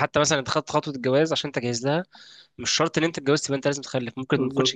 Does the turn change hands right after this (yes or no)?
yes